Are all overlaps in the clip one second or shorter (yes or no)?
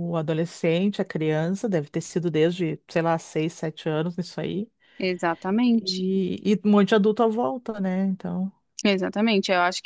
yes